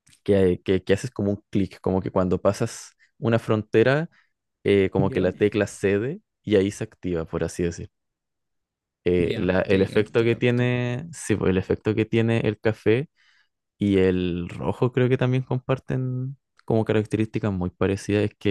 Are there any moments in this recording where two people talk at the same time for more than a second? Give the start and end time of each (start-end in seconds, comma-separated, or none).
9.2-10.7